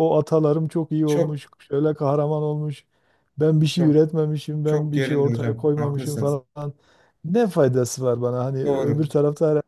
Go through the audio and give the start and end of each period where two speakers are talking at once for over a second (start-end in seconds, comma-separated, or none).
4.6-6.4